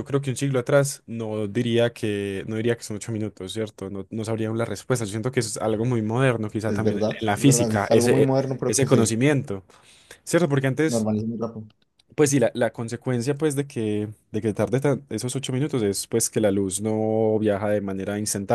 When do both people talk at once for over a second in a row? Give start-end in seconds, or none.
6.7-9.0